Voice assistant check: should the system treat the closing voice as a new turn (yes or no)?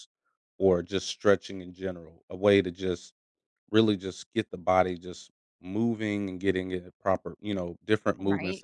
yes